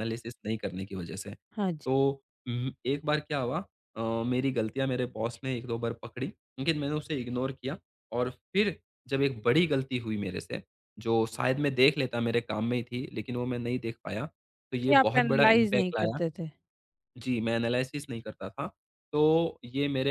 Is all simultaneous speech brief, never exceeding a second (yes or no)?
no